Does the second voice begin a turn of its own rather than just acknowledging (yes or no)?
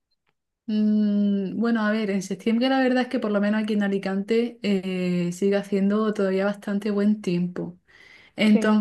no